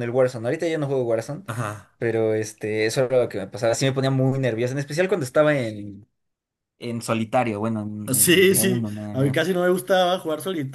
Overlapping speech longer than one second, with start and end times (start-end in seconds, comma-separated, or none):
8.1-9.4